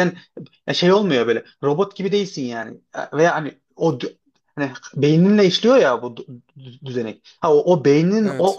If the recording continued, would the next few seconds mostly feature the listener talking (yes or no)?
no